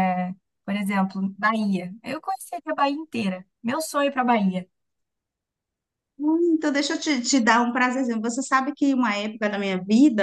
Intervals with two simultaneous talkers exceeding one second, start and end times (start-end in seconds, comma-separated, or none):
none